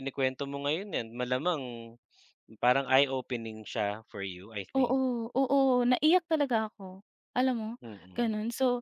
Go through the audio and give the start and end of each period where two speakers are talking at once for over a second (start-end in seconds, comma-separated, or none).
none